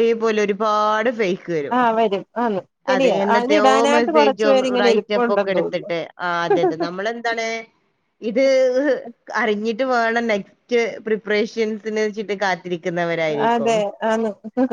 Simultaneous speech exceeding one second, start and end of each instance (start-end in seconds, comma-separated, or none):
2.9-5.9